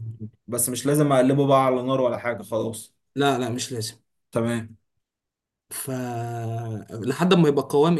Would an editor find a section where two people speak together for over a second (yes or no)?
no